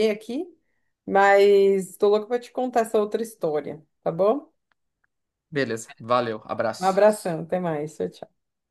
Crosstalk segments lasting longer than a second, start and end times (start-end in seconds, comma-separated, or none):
none